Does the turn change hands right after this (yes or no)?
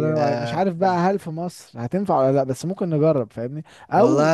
yes